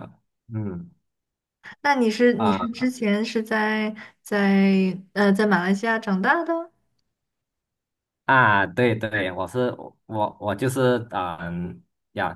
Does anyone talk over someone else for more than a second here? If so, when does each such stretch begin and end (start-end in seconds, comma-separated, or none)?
none